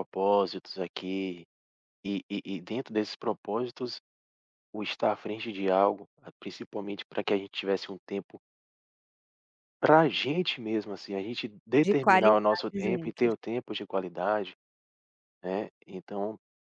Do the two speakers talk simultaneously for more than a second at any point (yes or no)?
yes